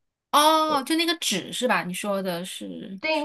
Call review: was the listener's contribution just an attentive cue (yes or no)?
no